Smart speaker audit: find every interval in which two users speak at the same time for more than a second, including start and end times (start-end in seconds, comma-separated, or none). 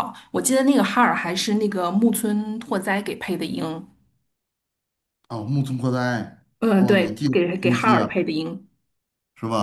6.6-8.2